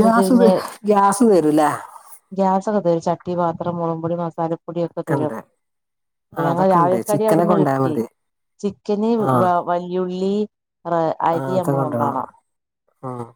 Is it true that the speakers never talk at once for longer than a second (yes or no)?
no